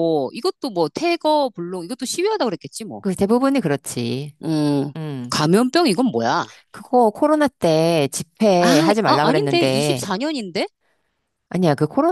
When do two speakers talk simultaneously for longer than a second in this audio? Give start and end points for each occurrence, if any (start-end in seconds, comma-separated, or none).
8.6-10.1